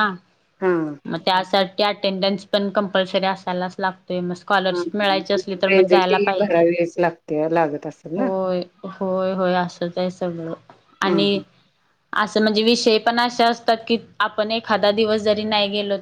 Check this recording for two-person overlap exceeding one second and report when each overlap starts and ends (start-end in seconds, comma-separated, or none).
4.8-6.7